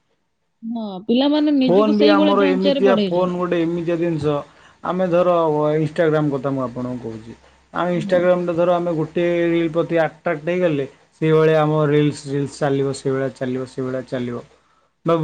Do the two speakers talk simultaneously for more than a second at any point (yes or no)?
yes